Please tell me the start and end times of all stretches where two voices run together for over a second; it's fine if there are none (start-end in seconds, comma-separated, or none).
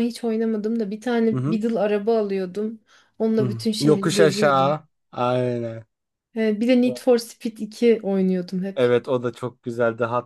3.4-4.8